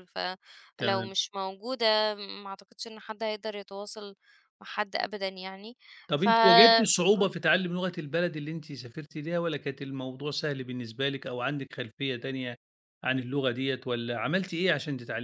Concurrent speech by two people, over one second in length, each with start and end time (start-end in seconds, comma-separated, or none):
6.2-7.4